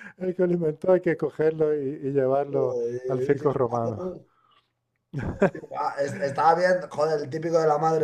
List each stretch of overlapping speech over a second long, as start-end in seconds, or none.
2.5-4.0